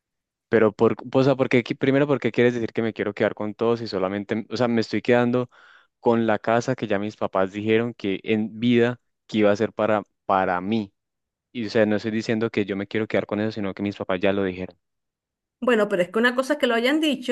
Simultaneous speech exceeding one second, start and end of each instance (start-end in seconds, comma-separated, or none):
none